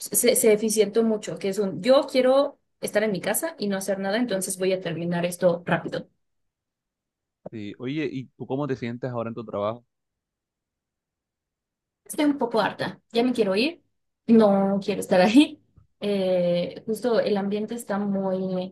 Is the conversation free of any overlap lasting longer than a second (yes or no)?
yes